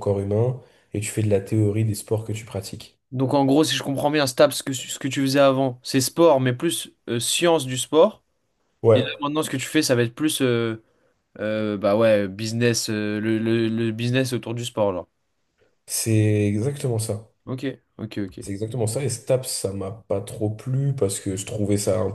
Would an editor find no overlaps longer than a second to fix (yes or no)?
yes